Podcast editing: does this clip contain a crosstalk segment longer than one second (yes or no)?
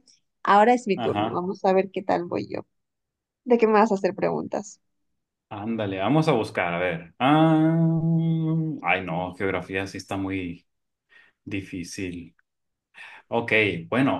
no